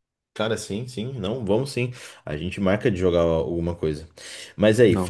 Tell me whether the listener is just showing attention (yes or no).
yes